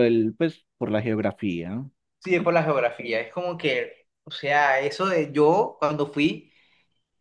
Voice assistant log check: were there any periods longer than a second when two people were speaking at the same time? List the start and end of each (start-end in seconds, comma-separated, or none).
none